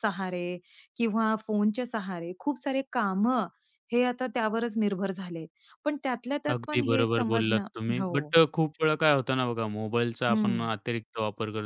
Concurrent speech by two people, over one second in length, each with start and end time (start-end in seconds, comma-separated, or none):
6.5-8.3